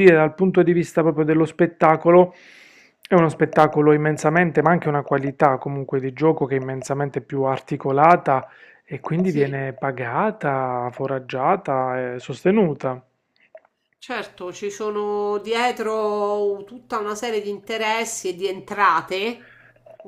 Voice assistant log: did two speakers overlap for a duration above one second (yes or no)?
no